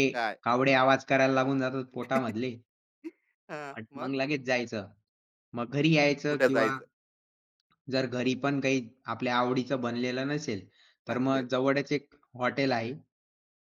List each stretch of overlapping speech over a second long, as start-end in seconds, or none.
none